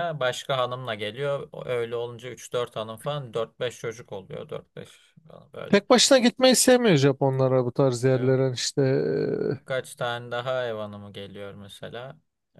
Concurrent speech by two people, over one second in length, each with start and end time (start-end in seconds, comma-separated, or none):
none